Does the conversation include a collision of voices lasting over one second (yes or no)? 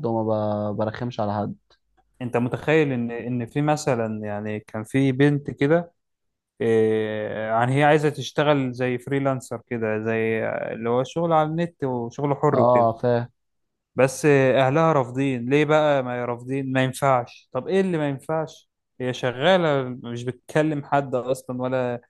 no